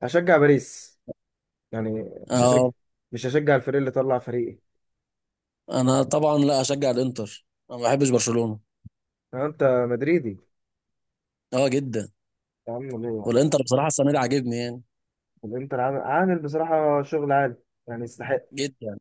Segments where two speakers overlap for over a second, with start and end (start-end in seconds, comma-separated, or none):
none